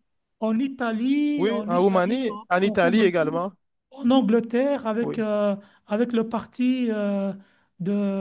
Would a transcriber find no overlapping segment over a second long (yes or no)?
no